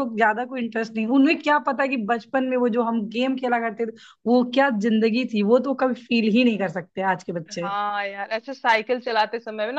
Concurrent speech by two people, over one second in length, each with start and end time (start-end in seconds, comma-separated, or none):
none